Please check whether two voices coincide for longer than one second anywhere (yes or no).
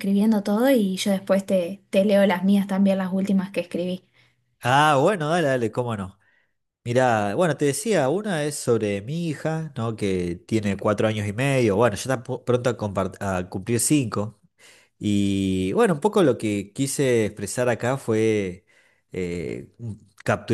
no